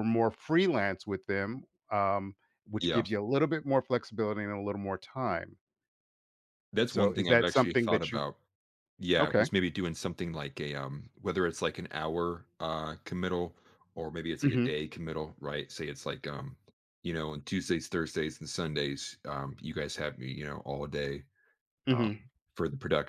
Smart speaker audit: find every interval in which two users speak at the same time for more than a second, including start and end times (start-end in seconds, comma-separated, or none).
6.8-8.2